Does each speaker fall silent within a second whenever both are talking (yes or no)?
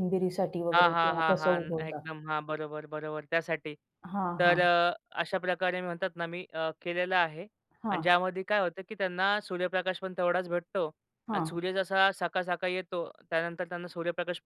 no